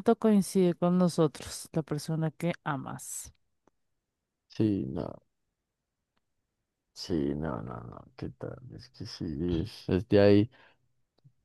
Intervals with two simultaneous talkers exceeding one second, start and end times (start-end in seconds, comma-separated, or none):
none